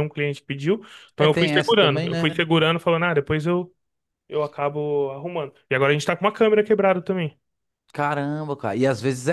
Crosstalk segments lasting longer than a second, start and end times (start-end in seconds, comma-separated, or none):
1.2-2.4